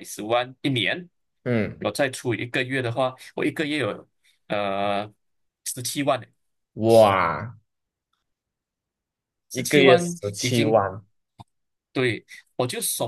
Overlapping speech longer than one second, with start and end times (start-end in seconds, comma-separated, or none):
9.5-10.9